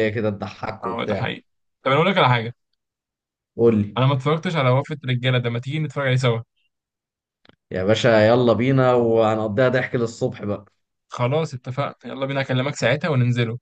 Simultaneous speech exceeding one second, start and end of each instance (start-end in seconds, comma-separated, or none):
none